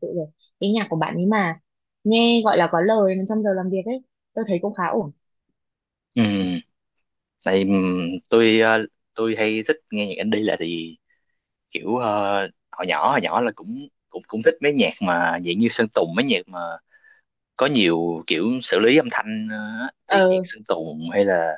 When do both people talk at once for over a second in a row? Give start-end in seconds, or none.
none